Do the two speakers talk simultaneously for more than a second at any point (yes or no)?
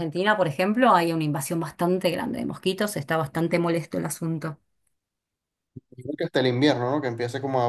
no